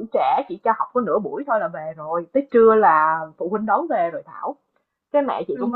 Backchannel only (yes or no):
yes